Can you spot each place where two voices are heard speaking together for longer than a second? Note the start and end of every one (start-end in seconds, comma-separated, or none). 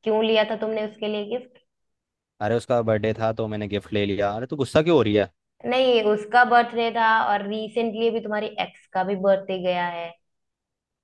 none